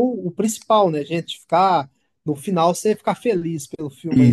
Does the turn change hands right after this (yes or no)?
yes